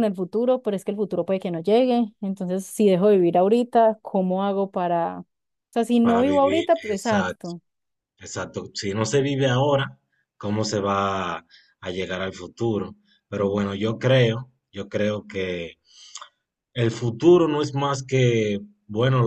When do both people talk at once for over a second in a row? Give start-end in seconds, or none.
6.0-7.5